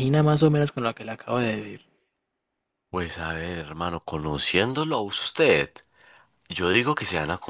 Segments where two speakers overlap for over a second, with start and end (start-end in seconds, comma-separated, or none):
none